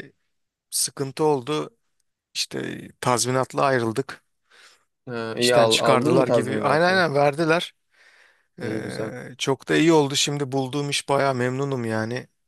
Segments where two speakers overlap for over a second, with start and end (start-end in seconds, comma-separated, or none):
5.4-7.0